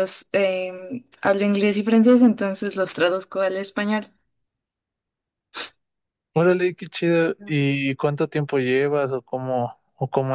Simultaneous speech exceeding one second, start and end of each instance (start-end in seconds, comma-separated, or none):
none